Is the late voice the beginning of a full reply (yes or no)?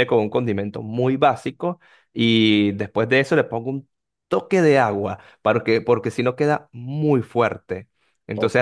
no